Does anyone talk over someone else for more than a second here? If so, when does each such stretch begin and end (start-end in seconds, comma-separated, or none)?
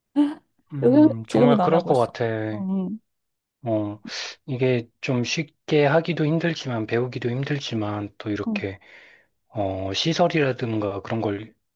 0.8-2.1